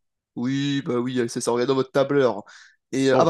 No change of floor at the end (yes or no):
yes